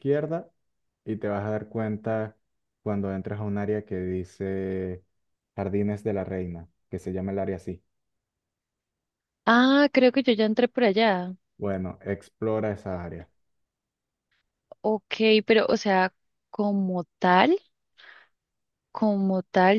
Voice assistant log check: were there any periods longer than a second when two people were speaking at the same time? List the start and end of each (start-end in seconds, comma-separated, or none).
none